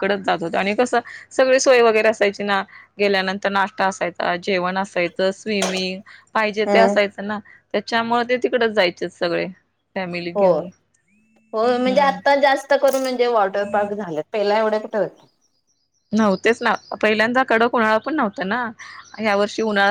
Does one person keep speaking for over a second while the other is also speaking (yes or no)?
no